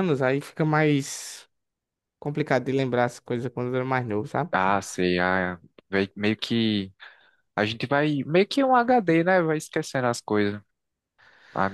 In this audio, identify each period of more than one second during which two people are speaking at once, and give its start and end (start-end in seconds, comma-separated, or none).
none